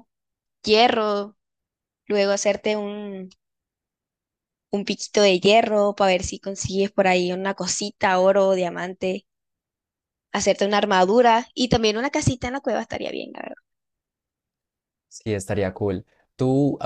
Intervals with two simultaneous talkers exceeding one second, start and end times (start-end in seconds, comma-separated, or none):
none